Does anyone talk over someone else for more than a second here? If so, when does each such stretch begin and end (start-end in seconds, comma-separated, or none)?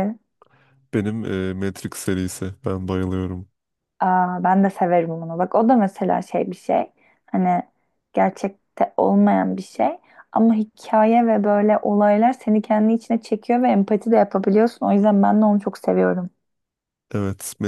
none